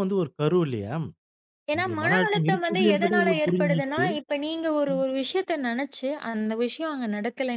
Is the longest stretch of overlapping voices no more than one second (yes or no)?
no